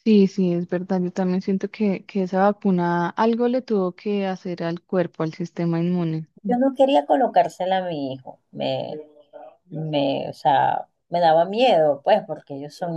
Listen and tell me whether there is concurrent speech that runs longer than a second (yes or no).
no